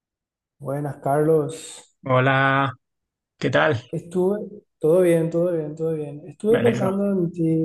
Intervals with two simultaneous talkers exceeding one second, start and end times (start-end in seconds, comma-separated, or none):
none